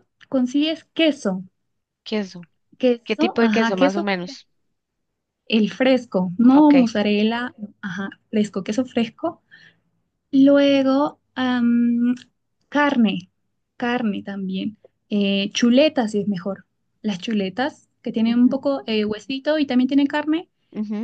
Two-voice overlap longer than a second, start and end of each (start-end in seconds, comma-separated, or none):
3.0-4.4